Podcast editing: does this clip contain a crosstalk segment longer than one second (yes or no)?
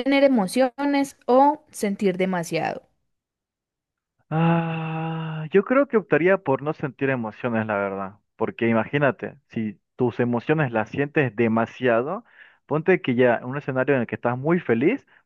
no